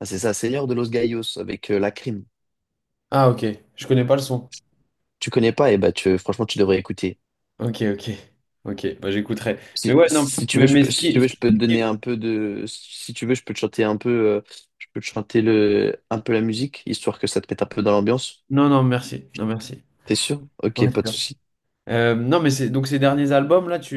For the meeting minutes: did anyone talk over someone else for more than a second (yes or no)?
yes